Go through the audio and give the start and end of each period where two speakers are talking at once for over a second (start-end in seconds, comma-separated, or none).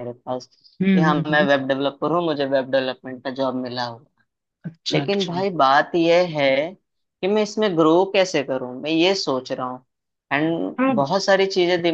none